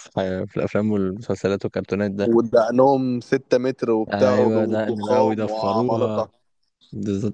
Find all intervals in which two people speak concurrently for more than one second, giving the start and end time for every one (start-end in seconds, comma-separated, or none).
4.1-6.2